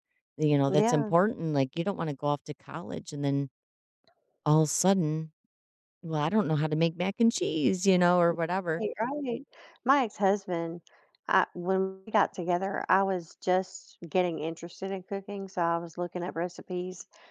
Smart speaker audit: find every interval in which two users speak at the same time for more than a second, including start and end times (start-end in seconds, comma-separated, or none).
none